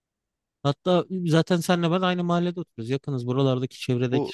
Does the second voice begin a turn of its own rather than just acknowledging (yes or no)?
yes